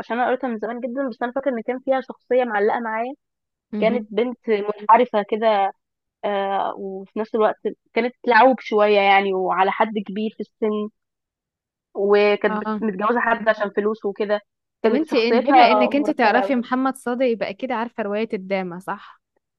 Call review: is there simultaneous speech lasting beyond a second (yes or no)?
yes